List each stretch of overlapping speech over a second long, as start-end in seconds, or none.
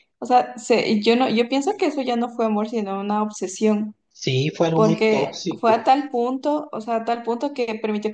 4.7-6.0